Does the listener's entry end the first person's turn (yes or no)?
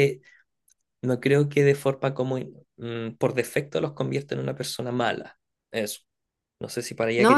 yes